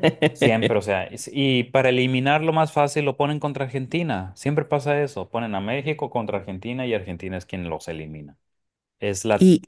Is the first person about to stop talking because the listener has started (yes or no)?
no